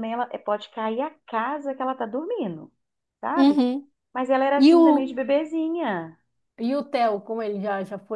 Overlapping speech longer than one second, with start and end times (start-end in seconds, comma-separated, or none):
none